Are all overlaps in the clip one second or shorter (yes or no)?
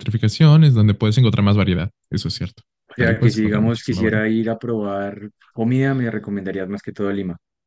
no